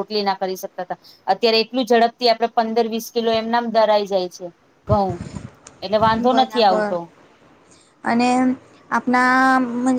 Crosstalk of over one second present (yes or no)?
no